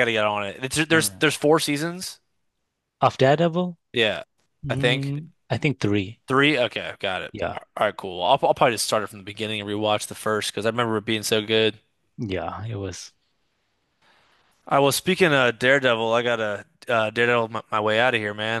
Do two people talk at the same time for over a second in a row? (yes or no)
no